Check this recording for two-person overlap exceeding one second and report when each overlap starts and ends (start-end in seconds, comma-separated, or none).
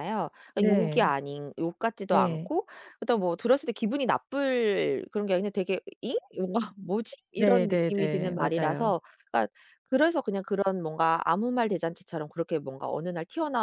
7.4-8.9